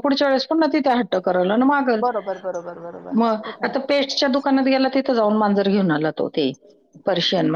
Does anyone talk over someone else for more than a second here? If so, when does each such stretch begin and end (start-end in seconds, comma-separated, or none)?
none